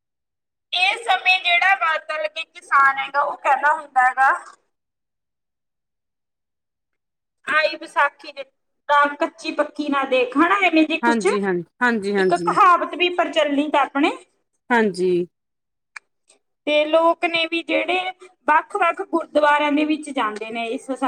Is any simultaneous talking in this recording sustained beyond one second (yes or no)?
yes